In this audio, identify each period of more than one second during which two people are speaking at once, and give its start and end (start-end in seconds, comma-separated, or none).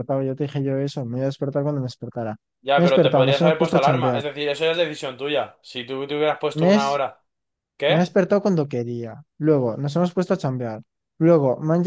2.7-4.2